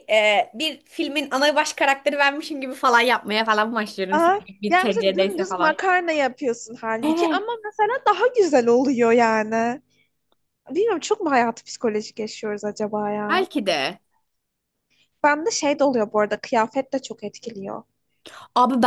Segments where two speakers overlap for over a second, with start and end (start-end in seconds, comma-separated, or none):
4.1-5.8